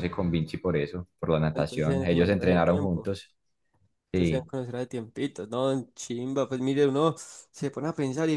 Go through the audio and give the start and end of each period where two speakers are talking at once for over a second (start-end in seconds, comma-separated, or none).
1.6-3.1